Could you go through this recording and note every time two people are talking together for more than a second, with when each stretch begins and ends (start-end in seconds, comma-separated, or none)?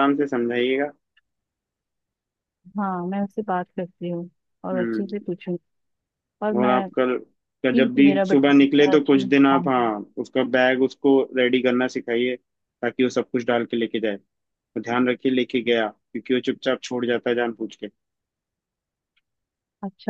7.7-9.9